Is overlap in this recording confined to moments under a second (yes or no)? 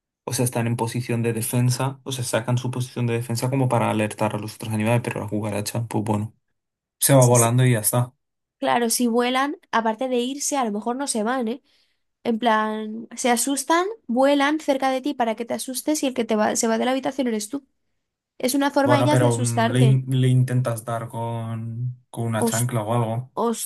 no